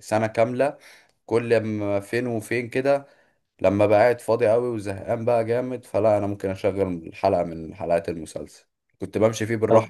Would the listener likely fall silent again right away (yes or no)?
yes